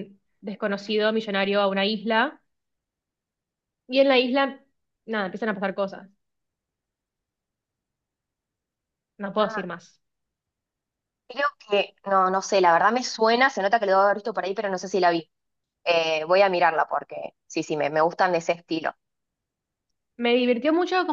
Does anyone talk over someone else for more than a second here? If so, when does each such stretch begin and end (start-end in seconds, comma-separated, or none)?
none